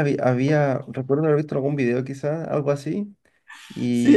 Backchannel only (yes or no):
no